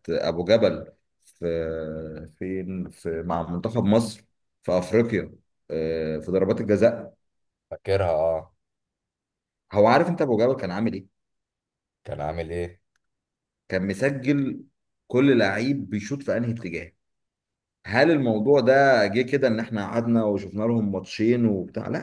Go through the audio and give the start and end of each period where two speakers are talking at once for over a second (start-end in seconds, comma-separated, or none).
none